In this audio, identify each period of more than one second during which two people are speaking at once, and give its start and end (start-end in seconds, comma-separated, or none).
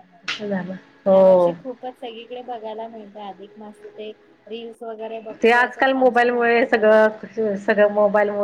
none